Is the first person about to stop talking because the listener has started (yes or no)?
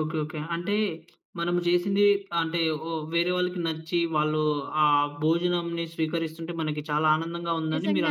yes